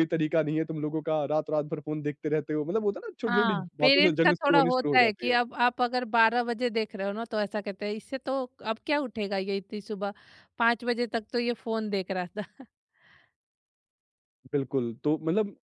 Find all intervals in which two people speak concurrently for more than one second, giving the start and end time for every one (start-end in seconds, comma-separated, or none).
3.2-5.4